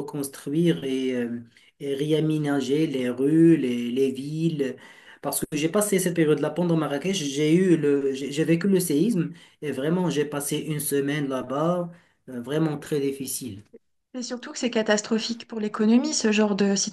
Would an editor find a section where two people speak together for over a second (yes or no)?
no